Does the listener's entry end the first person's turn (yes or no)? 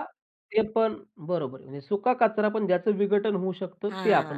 yes